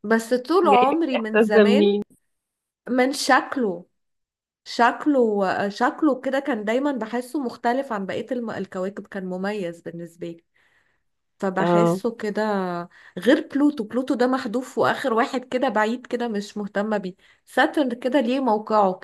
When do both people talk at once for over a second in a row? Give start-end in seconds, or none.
0.7-2.0